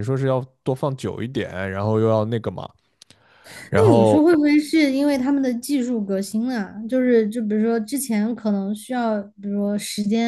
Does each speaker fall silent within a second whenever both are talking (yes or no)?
yes